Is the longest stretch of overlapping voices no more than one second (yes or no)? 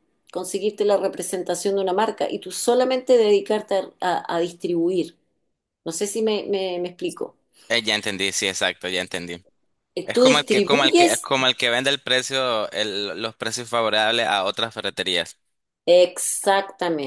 no